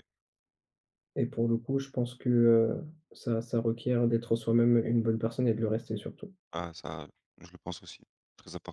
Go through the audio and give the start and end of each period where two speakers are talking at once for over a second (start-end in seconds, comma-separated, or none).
none